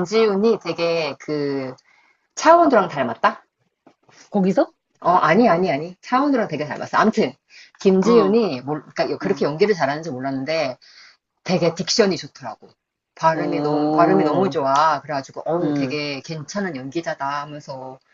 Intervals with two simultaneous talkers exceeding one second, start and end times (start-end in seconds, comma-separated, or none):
13.3-14.5